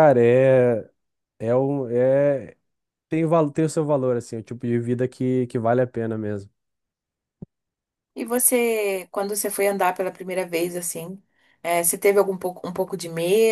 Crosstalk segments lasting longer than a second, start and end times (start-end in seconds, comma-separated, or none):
none